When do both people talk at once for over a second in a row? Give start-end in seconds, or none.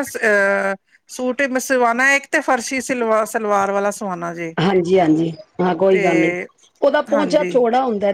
none